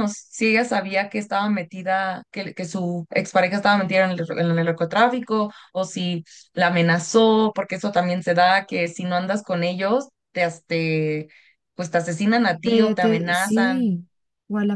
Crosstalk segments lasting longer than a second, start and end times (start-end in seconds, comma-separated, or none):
12.6-13.9